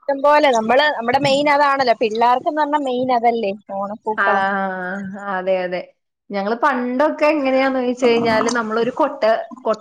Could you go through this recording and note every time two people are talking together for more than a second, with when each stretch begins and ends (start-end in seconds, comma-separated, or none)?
none